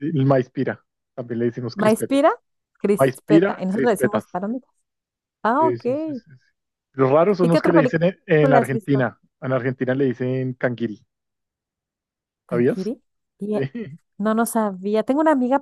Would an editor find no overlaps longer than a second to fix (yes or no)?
no